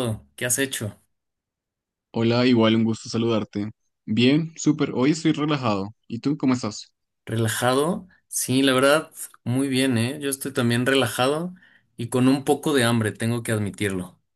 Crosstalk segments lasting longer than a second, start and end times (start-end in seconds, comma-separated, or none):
none